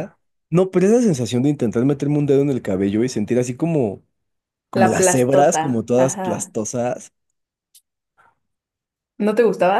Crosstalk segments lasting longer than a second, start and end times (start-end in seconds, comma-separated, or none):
4.7-6.5